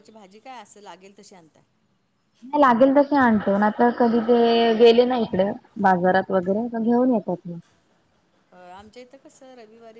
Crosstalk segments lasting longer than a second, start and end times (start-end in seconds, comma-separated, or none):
none